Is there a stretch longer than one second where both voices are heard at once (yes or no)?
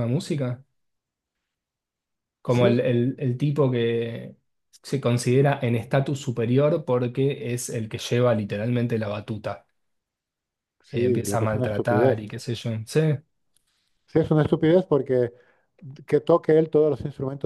yes